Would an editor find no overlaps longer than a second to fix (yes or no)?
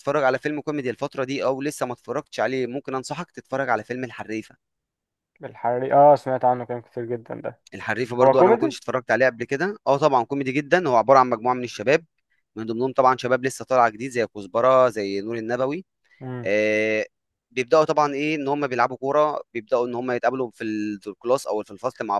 yes